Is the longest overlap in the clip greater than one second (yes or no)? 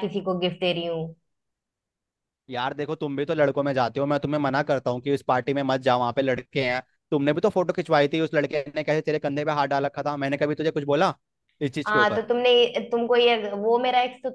no